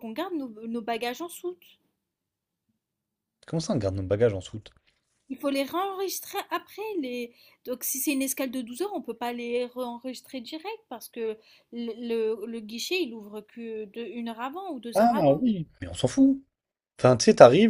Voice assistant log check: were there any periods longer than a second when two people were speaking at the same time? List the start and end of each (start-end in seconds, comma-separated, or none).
none